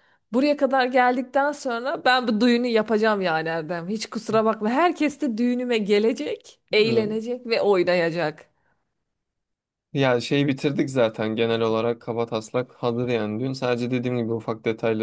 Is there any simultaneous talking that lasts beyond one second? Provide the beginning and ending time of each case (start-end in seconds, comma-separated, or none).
none